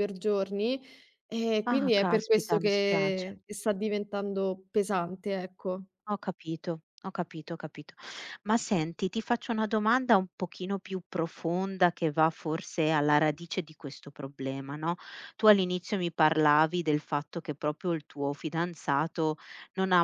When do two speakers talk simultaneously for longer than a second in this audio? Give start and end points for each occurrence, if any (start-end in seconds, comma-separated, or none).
1.7-3.4